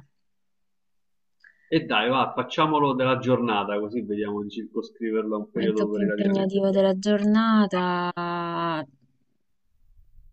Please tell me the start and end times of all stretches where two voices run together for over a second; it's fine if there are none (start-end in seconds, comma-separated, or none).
5.5-6.9